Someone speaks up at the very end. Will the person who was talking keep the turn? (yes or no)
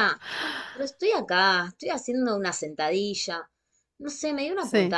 yes